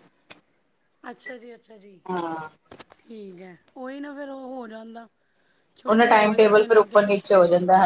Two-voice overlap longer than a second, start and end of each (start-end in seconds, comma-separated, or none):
5.9-7.3